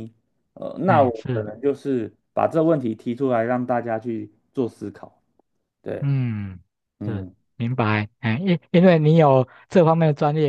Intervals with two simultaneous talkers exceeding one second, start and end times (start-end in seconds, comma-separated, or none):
none